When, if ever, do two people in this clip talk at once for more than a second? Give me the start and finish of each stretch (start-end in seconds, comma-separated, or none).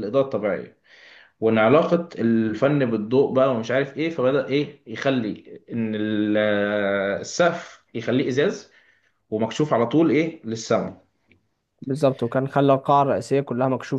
none